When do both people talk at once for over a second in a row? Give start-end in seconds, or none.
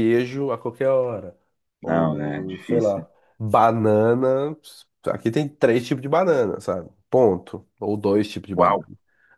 1.9-3.0